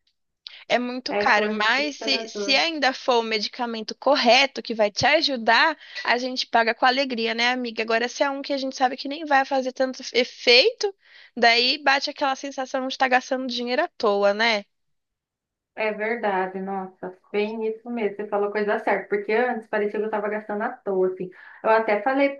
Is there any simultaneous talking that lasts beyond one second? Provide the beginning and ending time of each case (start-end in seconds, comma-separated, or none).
1.1-2.5